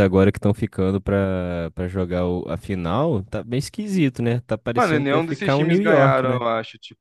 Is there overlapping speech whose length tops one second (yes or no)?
yes